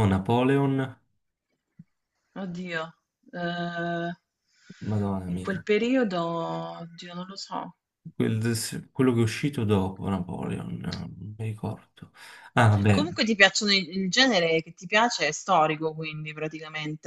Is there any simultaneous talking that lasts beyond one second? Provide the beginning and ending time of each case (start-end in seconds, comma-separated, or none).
none